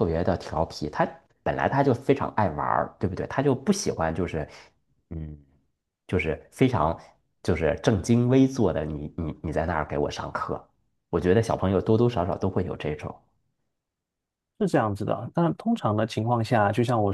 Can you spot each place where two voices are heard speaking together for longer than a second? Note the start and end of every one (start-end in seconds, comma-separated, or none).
none